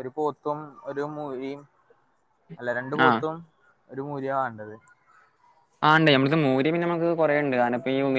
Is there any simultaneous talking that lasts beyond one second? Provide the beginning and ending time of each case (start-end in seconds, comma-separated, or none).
none